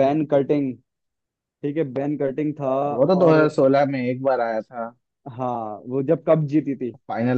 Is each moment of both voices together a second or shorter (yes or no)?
yes